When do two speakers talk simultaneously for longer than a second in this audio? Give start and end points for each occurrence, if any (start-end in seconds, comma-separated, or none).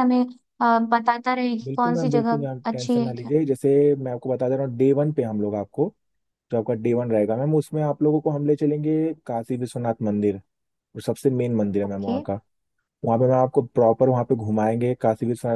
1.6-3.3